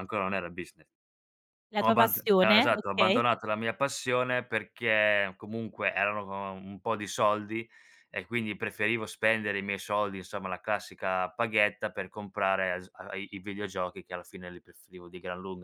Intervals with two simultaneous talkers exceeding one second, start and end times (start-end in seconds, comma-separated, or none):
1.8-3.2